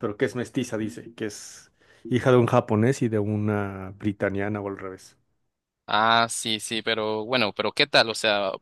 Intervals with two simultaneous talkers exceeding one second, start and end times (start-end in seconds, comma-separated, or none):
none